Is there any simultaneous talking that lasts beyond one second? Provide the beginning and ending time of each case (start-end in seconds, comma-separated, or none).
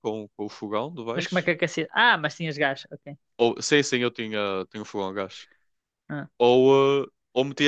none